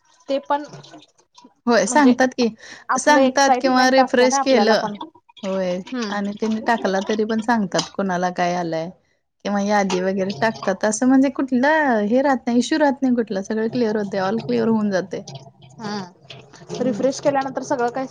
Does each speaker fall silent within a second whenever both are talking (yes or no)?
no